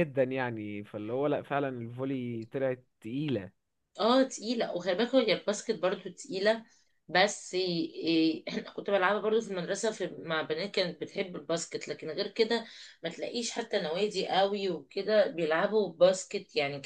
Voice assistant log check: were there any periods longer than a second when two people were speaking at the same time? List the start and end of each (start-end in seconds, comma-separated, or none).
none